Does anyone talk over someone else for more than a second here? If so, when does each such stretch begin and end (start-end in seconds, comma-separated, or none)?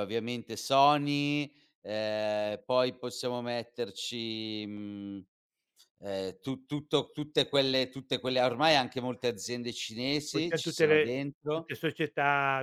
10.3-11.7